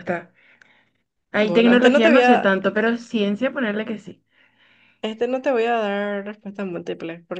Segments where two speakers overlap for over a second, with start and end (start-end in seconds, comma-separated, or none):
1.3-2.5